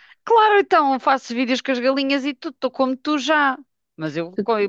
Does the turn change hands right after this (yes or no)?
no